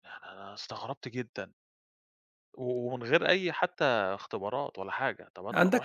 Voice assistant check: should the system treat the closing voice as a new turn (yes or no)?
yes